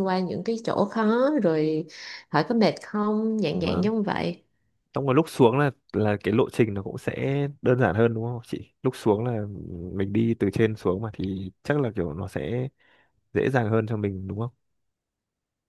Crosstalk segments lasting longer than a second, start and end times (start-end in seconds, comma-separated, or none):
none